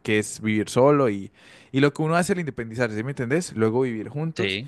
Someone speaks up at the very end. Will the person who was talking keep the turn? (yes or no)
yes